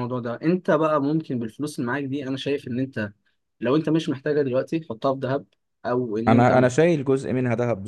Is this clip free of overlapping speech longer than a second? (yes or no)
yes